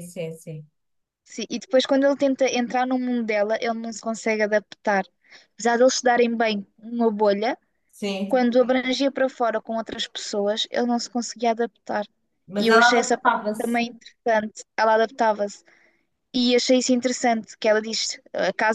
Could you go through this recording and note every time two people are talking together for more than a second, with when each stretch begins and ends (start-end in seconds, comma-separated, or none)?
12.6-13.8